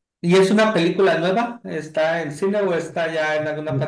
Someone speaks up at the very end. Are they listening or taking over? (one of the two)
taking over